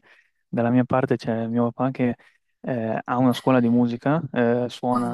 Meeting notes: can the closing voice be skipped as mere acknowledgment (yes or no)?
yes